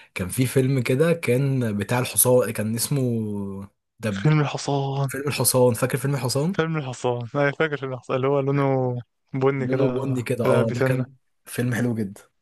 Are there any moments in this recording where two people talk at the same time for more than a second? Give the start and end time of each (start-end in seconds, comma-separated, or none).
9.6-11.2